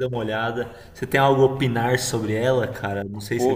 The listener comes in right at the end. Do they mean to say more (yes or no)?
yes